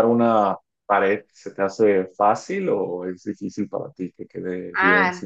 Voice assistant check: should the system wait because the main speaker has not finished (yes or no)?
no